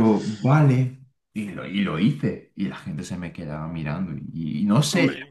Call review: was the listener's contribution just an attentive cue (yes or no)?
yes